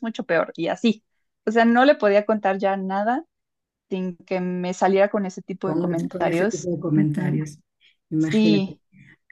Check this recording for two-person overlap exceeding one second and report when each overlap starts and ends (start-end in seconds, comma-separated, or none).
5.6-7.4